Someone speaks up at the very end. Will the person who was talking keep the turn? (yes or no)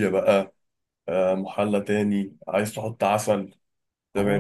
no